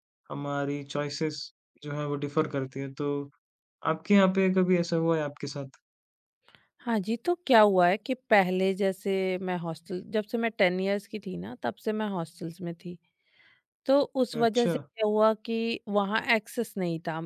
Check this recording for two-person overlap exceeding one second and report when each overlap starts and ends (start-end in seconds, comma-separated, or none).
none